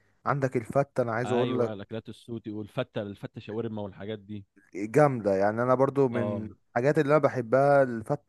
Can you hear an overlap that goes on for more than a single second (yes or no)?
no